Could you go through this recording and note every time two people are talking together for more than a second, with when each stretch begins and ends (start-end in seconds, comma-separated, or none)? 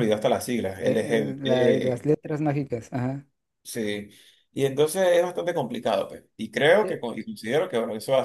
0.8-2.1